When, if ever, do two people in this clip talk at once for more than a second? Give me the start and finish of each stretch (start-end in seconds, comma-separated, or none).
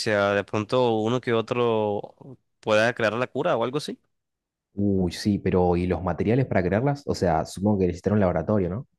none